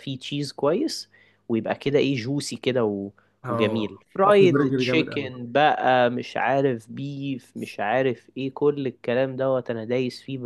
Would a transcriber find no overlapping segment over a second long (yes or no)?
no